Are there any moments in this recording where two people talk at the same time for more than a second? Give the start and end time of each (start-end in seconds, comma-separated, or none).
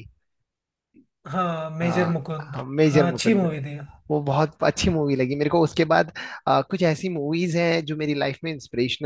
1.8-3.4